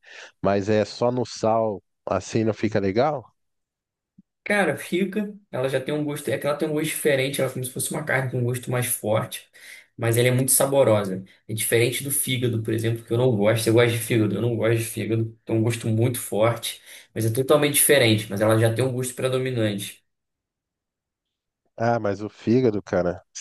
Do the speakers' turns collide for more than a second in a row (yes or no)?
no